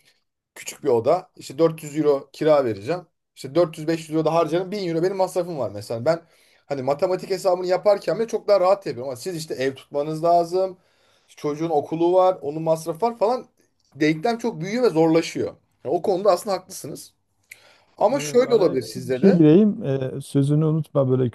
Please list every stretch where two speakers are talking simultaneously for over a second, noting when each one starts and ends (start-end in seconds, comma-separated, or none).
18.1-19.4